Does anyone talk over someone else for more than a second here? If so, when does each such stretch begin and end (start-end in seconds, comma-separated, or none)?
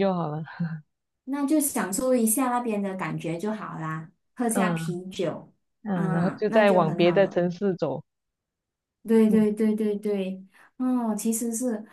5.9-7.4